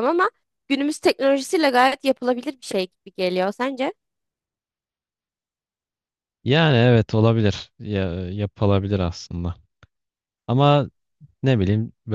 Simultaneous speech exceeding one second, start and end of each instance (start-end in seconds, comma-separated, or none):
none